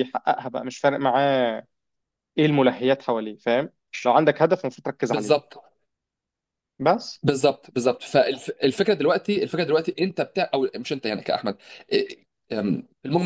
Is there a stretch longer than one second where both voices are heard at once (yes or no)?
no